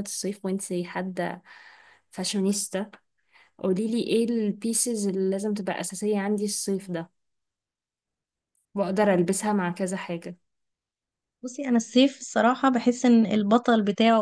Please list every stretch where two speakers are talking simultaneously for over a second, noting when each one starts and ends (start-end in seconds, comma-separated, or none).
none